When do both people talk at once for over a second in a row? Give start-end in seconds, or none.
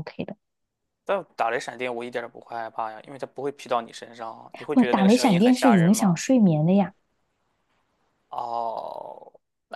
4.7-6.2